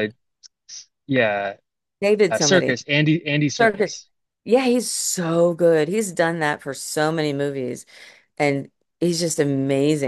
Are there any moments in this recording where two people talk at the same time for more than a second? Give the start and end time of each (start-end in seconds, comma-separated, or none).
none